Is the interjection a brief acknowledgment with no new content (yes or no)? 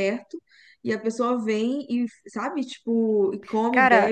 yes